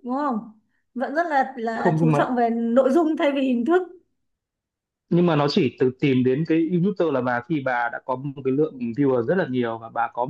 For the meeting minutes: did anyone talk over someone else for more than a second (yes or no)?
no